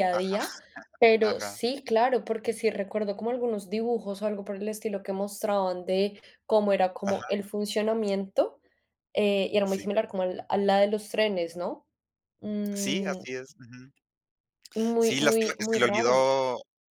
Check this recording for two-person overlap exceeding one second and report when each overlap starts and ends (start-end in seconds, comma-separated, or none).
15.0-16.3